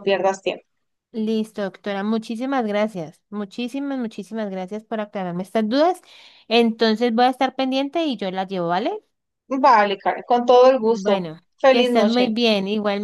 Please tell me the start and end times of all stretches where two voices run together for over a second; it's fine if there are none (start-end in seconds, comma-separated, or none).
10.8-12.4